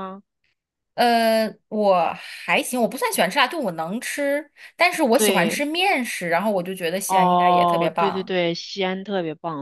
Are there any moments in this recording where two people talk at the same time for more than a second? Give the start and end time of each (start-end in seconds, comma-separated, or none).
7.1-8.3